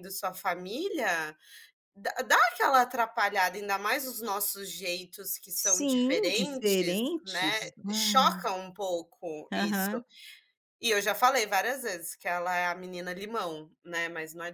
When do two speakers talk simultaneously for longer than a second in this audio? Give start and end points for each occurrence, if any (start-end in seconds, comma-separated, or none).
5.5-8.4